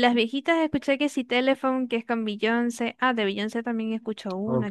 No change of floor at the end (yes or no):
yes